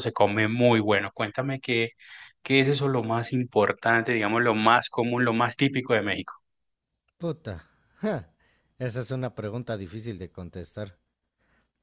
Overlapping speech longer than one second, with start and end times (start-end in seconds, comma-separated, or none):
none